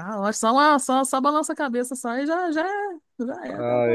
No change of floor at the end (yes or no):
no